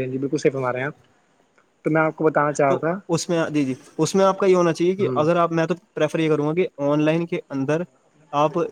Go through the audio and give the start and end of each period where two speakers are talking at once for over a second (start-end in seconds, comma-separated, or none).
none